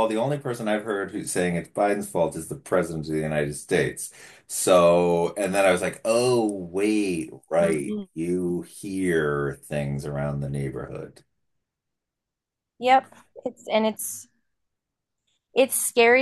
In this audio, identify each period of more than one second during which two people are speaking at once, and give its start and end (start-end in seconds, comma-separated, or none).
none